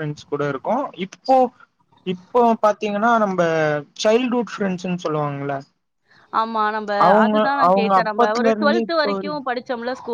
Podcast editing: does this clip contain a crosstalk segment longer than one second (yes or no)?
yes